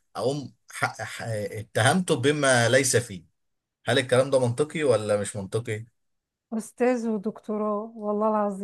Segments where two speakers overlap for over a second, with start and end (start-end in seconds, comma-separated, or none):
none